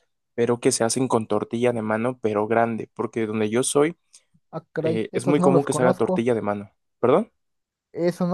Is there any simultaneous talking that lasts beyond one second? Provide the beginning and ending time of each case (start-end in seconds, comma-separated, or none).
4.8-6.3